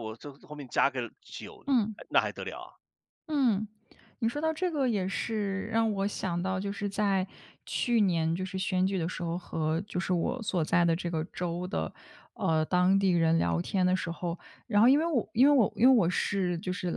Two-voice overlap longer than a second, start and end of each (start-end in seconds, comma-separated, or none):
none